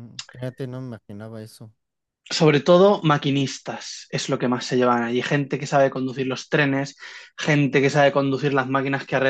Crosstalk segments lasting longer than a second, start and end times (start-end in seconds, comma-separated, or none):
none